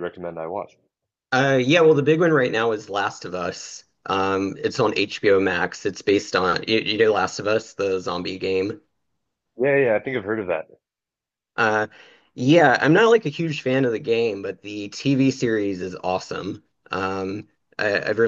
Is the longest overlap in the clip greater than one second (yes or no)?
no